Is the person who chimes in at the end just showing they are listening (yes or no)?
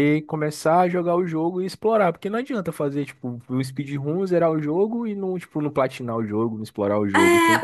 no